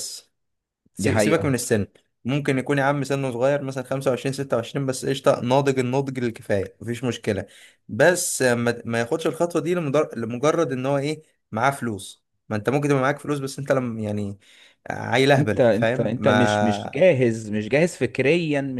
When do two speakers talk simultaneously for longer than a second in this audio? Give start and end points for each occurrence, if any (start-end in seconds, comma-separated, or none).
15.4-17.0